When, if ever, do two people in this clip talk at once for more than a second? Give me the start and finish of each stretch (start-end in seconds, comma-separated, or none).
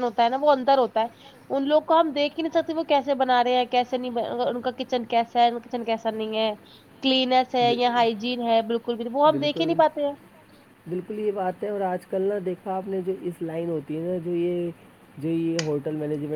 none